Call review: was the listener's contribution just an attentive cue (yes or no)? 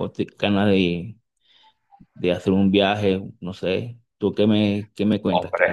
no